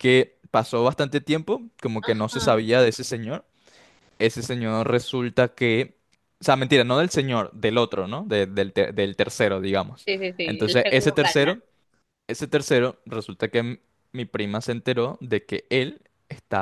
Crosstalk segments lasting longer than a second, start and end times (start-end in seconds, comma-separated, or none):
10.1-11.5